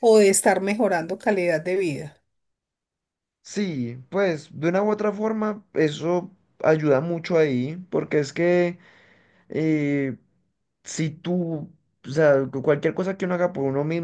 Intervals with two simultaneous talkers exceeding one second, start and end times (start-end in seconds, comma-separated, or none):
none